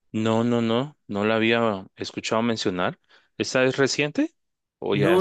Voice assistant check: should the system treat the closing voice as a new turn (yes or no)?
yes